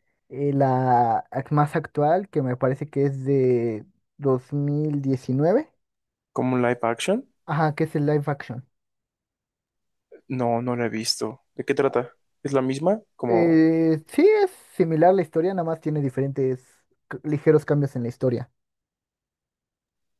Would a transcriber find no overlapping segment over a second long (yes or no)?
yes